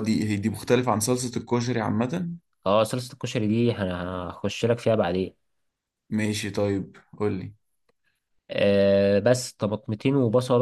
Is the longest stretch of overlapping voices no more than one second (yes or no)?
yes